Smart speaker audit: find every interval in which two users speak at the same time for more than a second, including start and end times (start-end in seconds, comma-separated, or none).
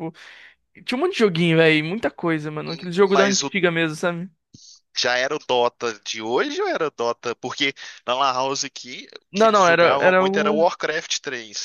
9.3-10.7